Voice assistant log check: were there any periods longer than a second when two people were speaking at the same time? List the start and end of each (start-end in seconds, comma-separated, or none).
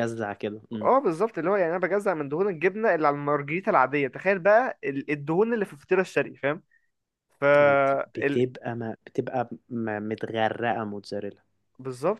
none